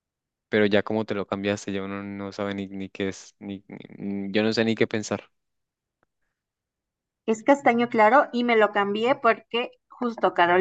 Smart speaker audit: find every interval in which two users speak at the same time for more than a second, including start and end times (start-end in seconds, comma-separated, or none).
none